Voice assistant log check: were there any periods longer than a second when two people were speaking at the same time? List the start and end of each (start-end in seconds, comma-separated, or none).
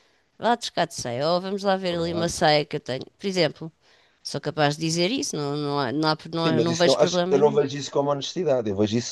6.3-7.6